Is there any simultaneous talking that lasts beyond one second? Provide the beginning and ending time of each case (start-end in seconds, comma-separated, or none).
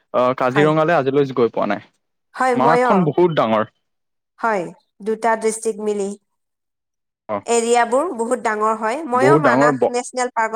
none